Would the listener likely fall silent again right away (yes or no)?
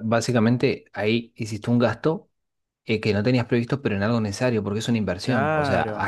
yes